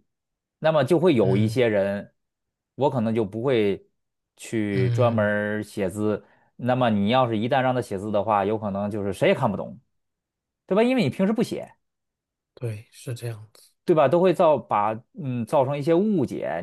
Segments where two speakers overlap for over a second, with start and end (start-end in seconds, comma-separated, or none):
none